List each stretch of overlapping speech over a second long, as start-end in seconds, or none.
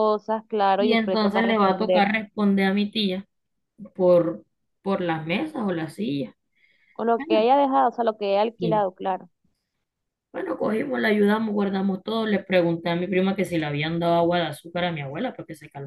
0.8-2.1